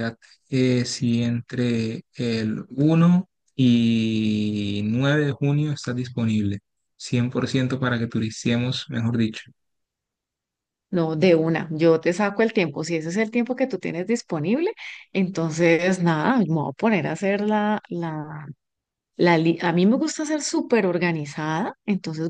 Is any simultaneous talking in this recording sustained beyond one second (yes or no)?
no